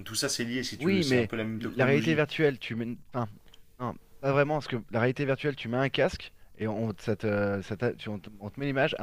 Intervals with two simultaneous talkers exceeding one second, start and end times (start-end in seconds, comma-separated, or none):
0.8-2.2